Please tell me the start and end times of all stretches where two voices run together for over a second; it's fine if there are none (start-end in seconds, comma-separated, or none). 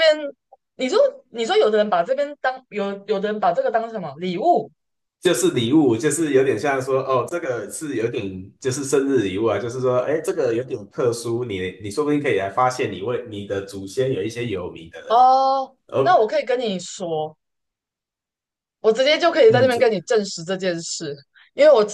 none